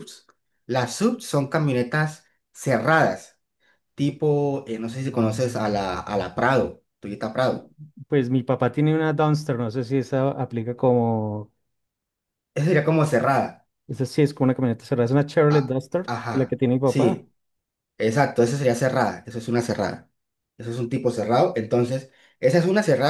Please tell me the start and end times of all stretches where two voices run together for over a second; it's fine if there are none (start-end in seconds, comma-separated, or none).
15.5-17.2